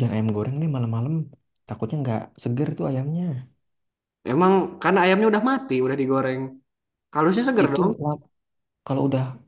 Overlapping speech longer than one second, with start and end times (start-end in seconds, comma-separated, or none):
none